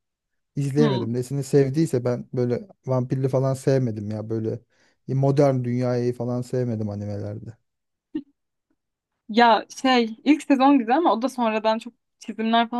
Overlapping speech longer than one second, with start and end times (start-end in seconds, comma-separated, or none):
none